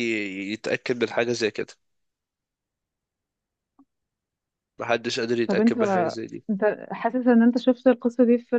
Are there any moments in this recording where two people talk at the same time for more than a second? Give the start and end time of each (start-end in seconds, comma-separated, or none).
none